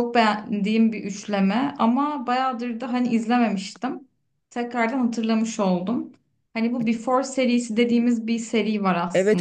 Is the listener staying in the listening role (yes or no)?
no